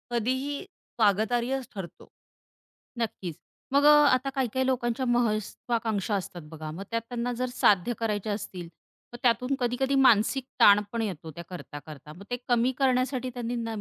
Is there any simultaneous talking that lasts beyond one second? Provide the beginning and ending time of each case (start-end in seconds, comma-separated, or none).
none